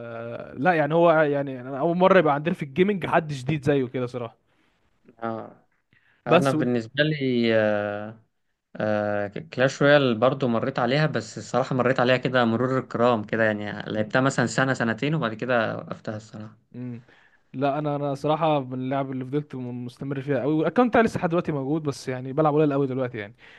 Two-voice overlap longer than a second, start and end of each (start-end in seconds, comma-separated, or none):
none